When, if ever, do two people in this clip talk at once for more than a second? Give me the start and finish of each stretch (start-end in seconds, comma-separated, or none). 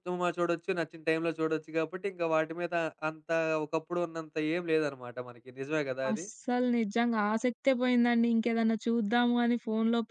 none